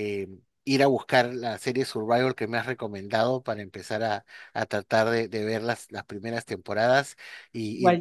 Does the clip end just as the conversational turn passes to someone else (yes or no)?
no